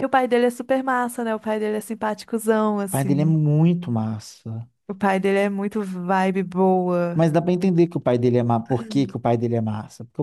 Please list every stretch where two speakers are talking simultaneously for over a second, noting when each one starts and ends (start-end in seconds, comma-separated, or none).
none